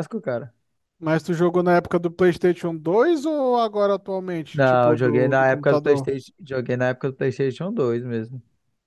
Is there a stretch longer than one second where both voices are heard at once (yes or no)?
yes